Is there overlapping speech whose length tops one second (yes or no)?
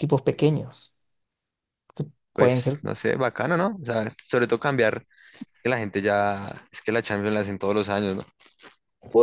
no